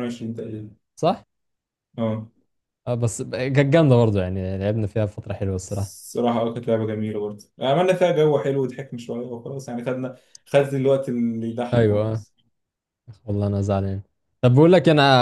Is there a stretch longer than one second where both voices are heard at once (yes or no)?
no